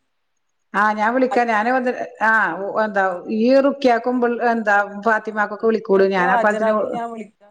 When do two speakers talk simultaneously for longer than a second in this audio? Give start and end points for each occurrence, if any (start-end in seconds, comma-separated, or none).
5.2-6.7